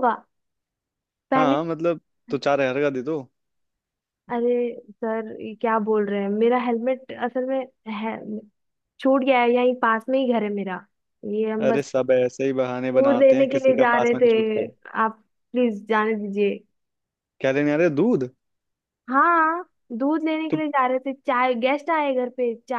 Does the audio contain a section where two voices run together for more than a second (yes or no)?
yes